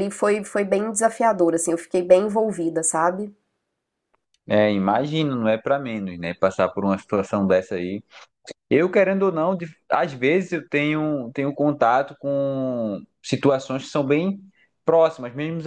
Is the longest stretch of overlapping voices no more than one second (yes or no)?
yes